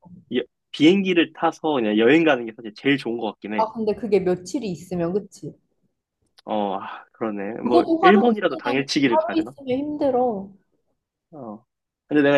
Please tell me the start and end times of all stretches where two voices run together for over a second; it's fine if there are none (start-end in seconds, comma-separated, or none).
7.6-9.5